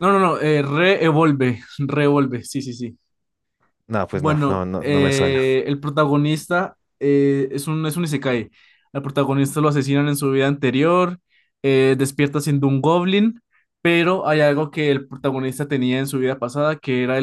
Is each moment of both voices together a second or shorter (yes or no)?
no